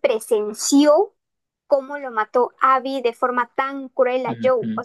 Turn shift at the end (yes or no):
no